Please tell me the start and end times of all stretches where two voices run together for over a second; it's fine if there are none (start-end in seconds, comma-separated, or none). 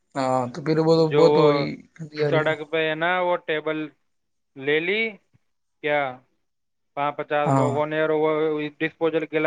none